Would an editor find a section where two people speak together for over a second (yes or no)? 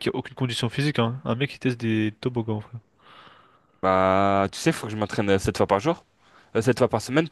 no